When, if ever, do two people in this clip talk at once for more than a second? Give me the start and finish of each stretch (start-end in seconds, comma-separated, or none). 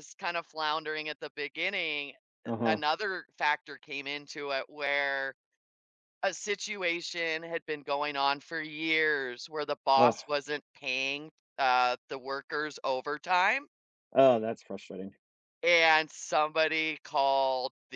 none